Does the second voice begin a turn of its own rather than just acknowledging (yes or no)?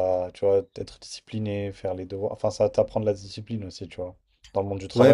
yes